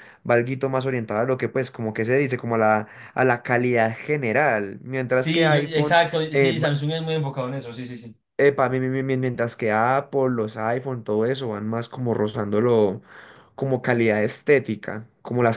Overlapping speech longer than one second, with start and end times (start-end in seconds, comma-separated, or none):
5.1-6.5